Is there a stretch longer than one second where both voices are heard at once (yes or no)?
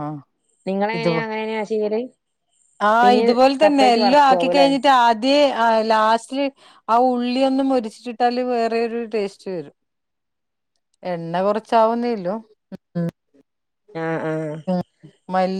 yes